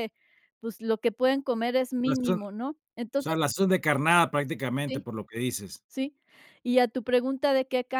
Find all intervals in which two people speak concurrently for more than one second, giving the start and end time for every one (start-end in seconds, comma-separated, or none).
none